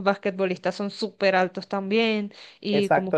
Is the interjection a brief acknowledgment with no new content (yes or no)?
no